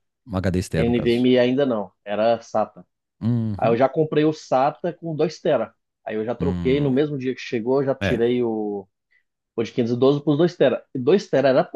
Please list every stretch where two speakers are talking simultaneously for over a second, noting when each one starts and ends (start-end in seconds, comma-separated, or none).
none